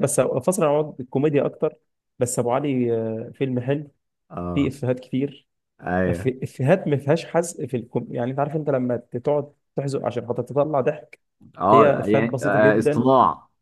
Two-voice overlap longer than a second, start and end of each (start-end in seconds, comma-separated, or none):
11.7-13.1